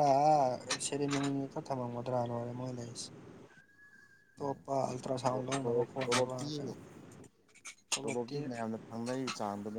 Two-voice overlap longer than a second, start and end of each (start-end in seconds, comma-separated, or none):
5.3-6.7